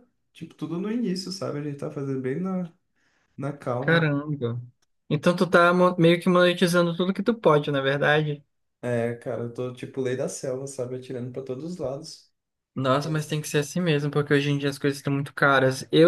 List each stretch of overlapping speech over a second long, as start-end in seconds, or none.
none